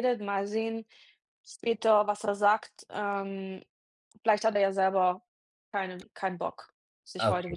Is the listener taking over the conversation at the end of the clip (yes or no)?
yes